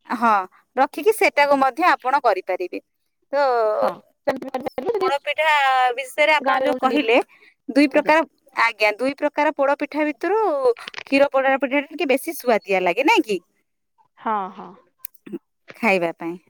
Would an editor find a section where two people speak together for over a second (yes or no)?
no